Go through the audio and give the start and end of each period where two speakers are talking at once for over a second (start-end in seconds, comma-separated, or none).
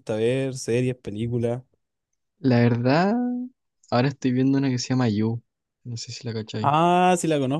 none